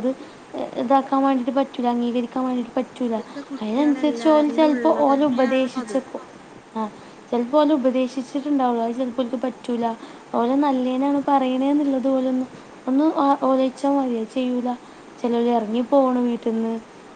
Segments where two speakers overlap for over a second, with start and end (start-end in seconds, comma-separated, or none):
3.6-6.0